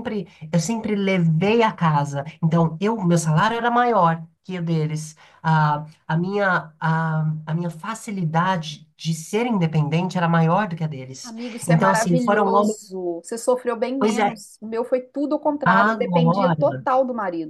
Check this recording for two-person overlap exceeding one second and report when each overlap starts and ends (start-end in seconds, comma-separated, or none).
11.2-12.9, 15.6-16.9